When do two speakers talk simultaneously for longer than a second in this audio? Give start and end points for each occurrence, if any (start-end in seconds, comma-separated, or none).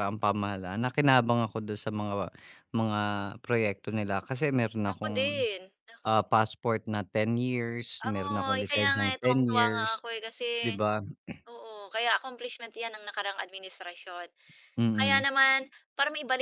8.1-10.0